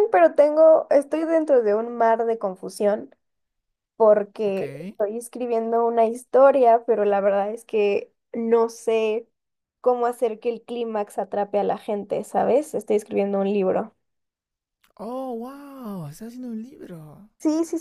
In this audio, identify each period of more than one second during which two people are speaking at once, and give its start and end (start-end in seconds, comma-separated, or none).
none